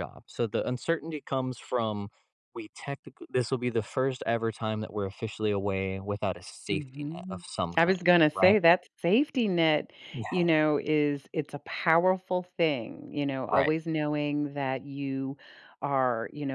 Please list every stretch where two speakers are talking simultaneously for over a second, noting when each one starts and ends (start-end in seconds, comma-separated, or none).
6.7-8.6